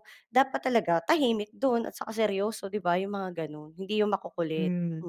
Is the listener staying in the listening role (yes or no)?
no